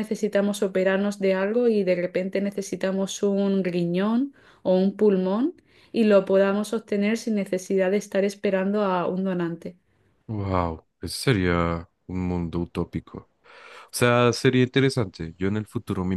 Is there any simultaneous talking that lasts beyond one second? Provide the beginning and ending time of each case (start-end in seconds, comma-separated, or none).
none